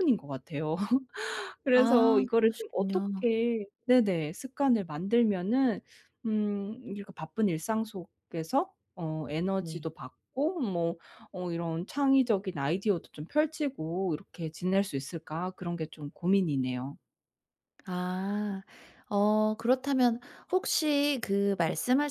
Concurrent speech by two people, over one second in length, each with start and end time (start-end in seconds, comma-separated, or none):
1.7-3.2